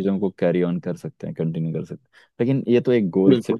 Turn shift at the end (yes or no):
no